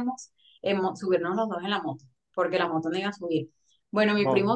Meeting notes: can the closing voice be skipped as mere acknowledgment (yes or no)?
yes